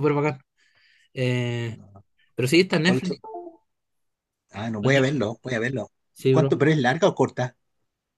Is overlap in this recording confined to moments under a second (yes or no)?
yes